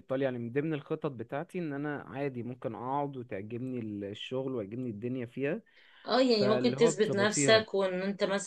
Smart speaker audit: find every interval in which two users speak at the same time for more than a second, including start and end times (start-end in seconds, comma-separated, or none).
6.3-7.7